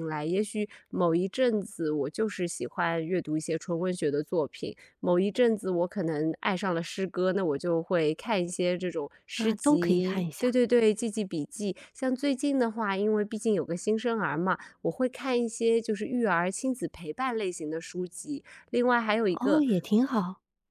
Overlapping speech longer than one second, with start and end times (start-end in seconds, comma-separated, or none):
9.3-10.5